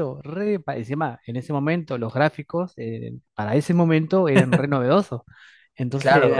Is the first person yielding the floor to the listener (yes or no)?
yes